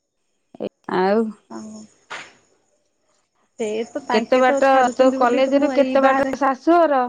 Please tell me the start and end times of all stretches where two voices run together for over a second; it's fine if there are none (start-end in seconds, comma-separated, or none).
4.1-6.3